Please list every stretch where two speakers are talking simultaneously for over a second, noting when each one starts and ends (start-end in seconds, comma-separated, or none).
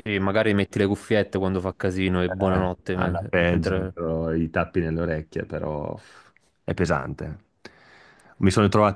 2.3-3.9